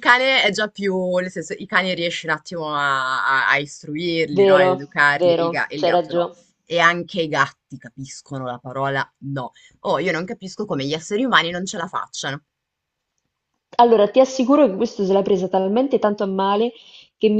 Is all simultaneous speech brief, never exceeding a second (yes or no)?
no